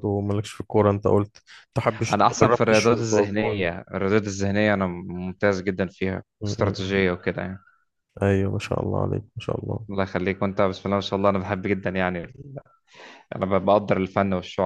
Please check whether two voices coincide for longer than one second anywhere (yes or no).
yes